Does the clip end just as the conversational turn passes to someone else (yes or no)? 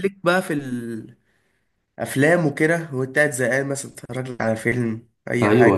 yes